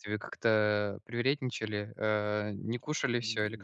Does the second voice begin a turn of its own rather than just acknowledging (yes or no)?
yes